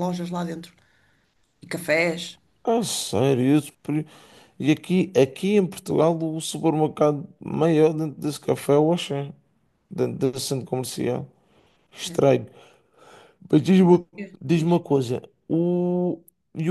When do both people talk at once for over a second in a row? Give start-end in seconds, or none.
none